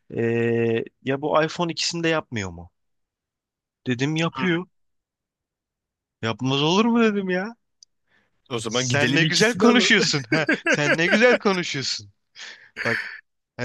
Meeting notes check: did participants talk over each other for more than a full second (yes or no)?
yes